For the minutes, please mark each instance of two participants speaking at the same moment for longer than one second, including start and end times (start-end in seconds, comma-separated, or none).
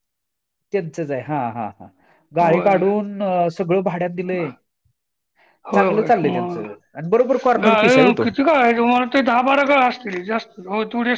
5.8-8.2